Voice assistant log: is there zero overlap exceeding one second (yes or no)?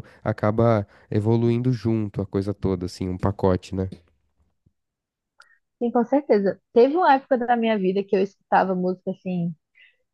yes